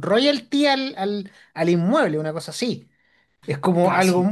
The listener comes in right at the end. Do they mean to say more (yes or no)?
no